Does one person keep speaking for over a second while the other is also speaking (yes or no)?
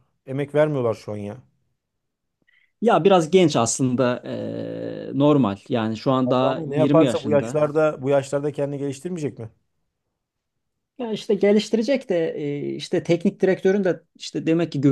yes